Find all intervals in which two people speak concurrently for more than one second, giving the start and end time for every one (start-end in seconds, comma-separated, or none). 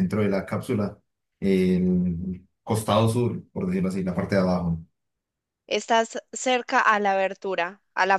none